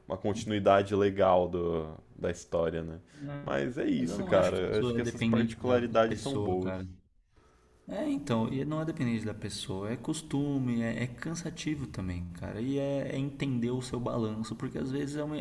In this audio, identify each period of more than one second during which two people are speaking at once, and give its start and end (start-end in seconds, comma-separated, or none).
4.0-6.7